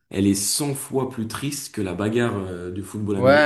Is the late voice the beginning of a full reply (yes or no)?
yes